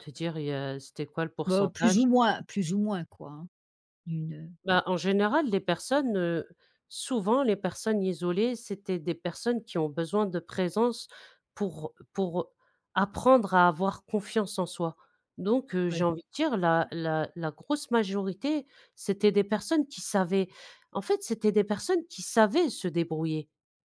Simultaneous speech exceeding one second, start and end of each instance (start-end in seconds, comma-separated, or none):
none